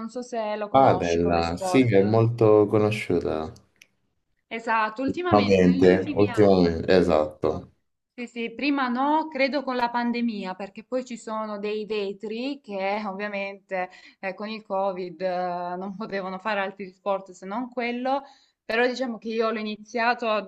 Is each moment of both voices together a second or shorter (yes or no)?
no